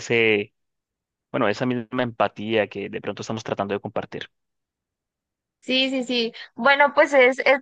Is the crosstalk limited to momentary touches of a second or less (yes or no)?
yes